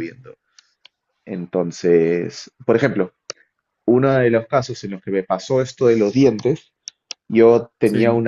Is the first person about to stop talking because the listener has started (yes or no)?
no